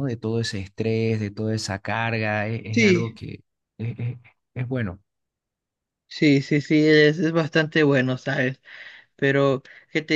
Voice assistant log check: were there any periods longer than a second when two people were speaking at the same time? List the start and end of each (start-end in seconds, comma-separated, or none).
none